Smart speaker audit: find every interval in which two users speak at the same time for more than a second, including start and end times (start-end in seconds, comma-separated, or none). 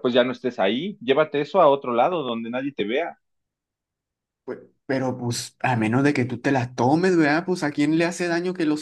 none